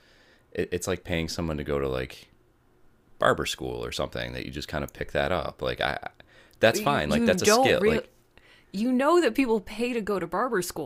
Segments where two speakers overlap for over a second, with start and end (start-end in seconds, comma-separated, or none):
6.7-8.0